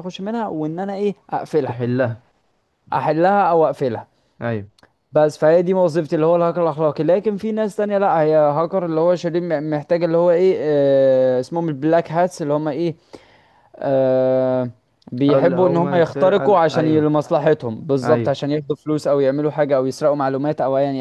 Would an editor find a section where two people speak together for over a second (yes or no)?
yes